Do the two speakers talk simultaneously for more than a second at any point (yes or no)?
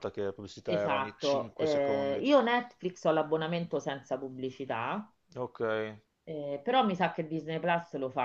yes